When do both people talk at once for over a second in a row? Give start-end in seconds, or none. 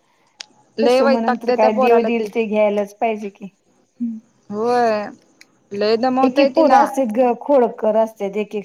0.8-2.3